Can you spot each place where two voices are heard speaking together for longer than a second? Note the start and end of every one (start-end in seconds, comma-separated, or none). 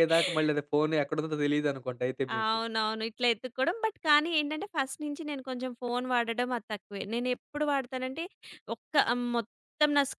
none